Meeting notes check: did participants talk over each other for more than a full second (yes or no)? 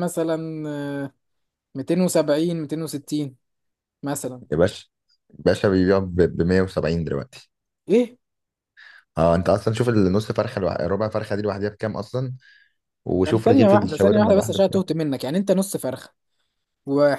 yes